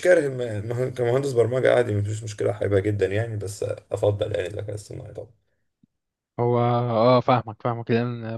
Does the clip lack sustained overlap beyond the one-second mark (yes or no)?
yes